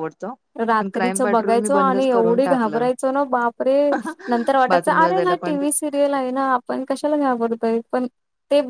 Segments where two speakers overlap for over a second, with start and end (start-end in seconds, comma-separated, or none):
0.8-2.9, 4.7-6.3